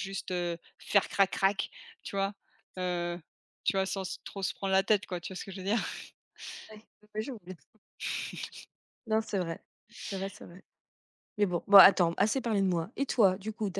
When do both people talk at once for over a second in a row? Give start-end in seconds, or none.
none